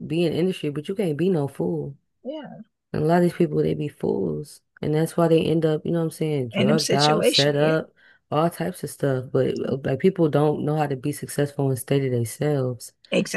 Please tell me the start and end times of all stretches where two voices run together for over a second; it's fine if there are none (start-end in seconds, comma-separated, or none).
6.5-7.8